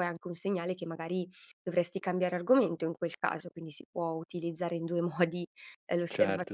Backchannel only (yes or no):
no